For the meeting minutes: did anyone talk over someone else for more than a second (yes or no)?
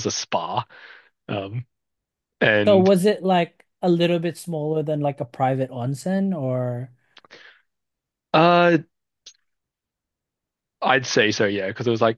no